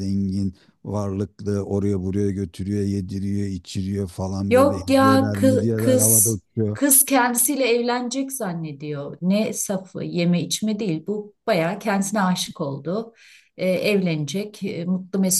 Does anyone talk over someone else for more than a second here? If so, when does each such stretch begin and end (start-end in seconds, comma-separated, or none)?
4.5-6.8